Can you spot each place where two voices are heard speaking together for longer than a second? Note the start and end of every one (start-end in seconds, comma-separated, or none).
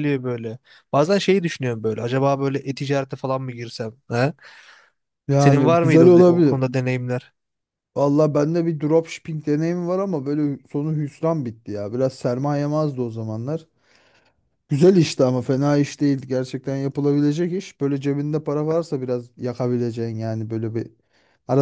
5.4-6.6